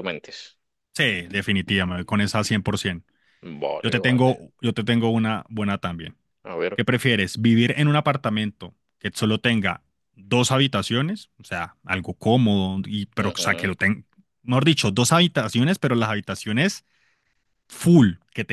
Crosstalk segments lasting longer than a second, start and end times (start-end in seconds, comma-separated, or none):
none